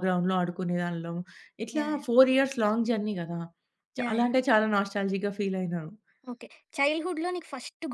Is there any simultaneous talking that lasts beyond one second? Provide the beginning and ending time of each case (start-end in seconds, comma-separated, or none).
none